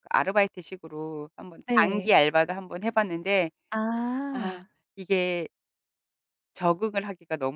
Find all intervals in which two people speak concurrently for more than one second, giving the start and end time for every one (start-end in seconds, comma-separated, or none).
none